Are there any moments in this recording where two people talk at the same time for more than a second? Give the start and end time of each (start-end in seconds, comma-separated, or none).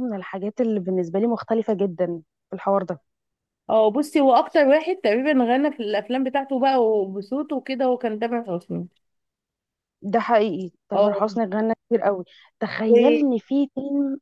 none